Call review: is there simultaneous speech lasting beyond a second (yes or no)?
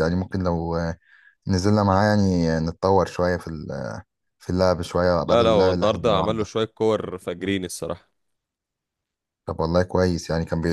yes